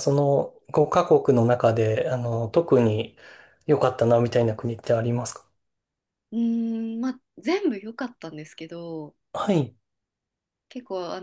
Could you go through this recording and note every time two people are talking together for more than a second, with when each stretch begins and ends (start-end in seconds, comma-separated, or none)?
none